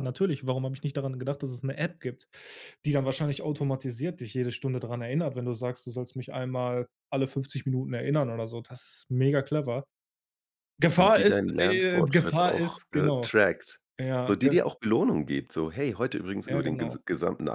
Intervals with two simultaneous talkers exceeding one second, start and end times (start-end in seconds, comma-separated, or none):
10.9-13.4